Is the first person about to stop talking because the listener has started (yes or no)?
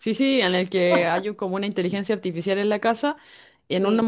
no